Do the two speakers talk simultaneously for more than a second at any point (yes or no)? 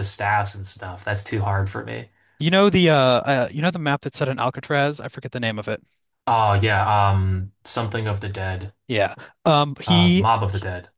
no